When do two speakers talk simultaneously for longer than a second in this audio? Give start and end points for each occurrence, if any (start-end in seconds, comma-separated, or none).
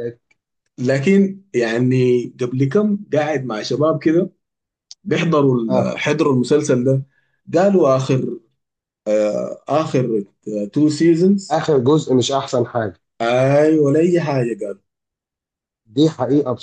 none